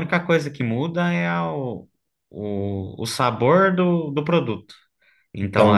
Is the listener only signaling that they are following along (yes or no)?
no